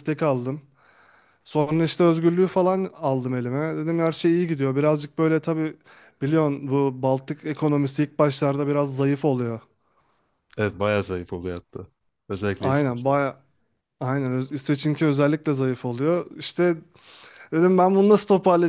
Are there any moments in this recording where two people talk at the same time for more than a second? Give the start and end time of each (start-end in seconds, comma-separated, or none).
none